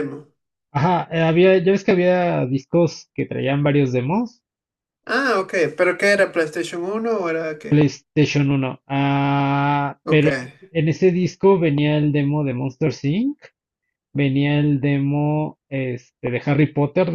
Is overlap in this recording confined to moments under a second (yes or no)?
yes